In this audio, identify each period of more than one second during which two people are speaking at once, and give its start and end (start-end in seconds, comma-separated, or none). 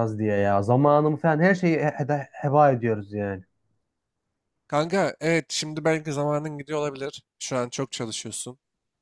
none